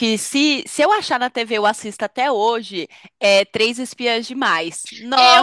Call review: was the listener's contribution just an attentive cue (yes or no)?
no